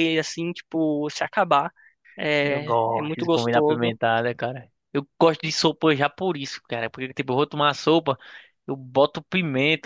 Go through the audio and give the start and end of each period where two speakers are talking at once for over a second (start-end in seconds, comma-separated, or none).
2.4-3.9